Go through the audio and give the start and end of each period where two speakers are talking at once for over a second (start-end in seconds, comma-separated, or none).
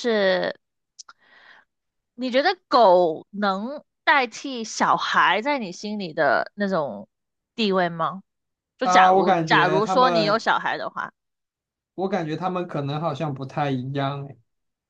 8.8-10.5